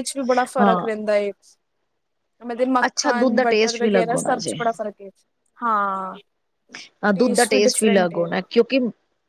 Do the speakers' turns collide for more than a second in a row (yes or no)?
yes